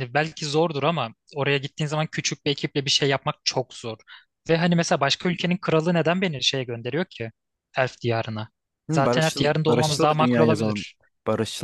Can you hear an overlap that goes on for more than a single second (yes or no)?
yes